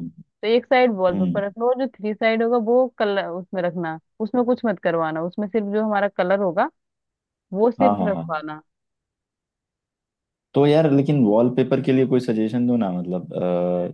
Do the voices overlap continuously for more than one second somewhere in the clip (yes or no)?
no